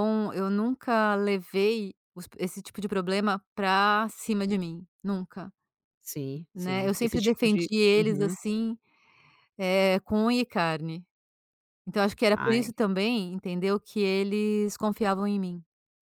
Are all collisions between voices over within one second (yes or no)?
no